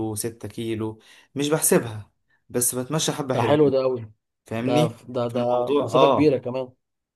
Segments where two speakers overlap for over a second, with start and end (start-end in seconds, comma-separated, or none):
4.6-6.4